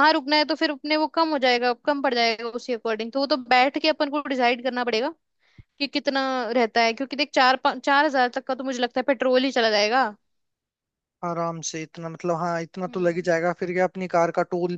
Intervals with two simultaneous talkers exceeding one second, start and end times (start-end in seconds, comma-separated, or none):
none